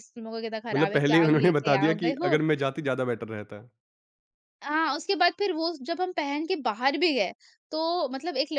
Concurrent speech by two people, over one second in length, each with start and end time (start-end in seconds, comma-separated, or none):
0.7-2.4